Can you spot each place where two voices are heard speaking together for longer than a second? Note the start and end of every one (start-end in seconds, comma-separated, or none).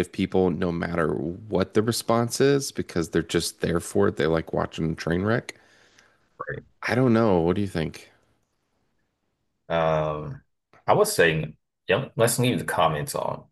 none